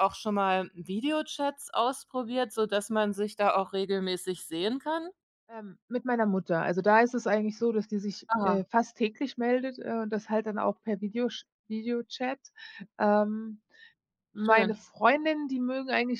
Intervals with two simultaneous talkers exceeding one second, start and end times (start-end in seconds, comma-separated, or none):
none